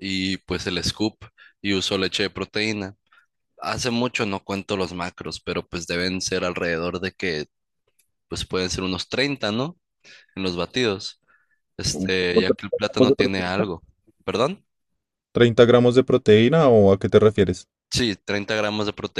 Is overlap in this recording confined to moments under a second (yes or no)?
no